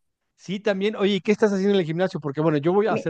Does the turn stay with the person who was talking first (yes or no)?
yes